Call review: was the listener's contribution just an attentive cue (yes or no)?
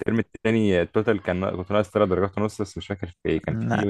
yes